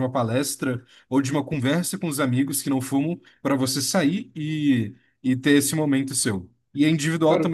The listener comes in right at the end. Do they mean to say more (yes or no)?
no